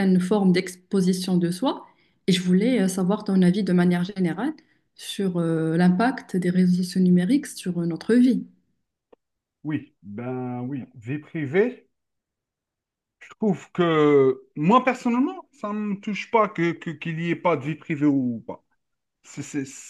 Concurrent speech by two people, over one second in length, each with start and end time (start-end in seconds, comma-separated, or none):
none